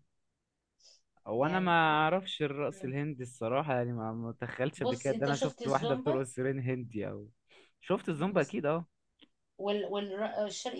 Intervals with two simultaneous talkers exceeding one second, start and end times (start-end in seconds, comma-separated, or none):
4.8-6.2